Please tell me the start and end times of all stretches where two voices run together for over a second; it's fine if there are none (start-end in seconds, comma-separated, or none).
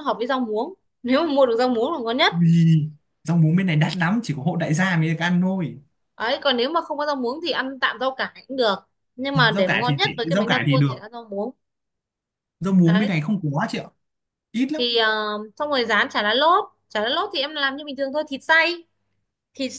9.3-11.0